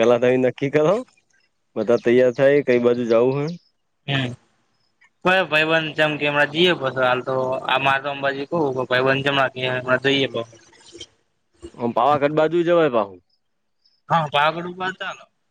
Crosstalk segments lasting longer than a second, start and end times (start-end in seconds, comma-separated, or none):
none